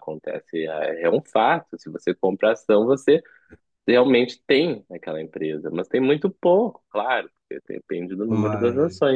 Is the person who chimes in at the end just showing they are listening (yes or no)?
yes